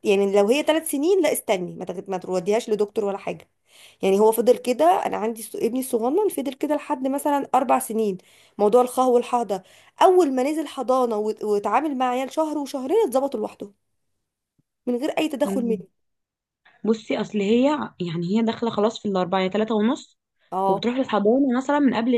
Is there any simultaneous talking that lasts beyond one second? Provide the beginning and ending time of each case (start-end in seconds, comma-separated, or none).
none